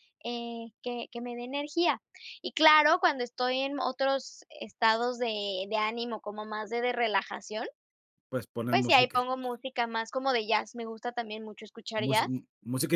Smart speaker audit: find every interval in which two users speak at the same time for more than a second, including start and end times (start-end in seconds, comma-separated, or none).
none